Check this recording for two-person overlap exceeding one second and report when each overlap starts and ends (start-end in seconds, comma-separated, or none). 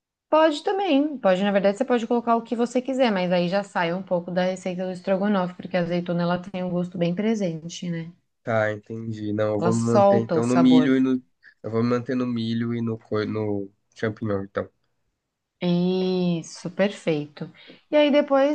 9.6-10.9